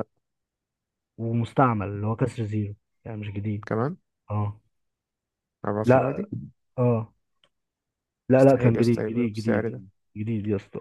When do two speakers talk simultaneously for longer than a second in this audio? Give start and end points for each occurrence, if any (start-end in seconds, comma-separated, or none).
8.4-9.8